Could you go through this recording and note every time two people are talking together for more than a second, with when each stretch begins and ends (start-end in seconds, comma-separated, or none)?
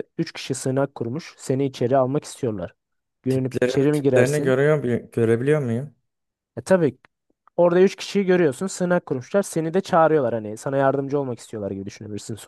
3.3-4.6